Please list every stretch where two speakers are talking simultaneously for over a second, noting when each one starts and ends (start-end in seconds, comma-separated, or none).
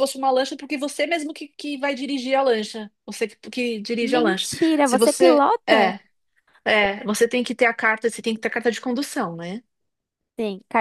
4.0-6.0